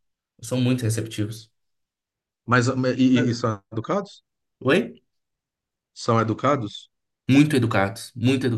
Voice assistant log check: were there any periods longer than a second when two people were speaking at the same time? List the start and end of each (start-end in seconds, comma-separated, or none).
none